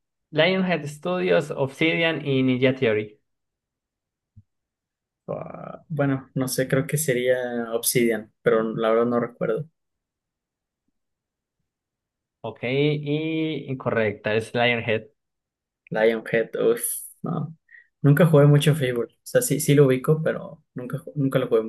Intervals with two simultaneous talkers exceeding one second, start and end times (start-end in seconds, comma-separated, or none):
none